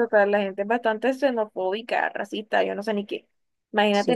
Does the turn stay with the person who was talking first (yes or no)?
yes